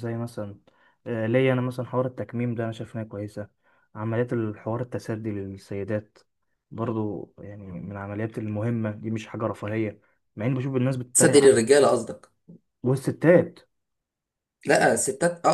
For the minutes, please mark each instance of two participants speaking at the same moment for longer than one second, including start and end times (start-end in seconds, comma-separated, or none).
none